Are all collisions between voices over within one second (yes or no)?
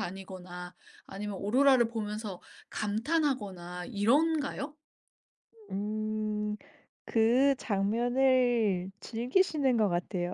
yes